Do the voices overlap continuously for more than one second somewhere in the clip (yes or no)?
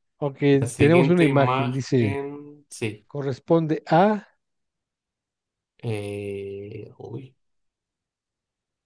yes